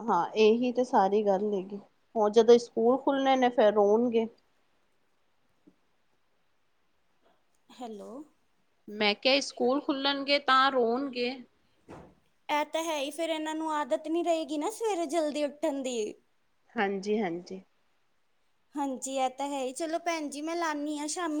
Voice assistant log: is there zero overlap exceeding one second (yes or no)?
yes